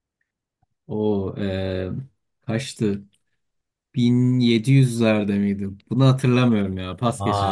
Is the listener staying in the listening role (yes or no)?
no